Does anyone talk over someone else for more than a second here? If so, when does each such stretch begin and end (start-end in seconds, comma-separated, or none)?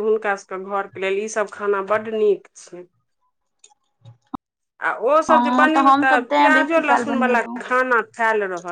5.3-7.6